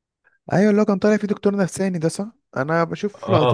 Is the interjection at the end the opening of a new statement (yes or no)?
no